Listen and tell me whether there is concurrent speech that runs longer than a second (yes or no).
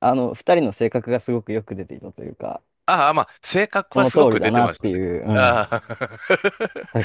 yes